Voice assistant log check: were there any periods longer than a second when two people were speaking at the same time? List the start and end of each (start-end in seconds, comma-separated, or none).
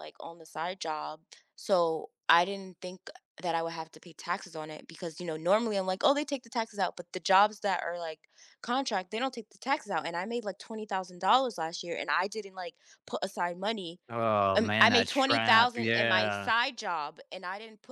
14.6-16.5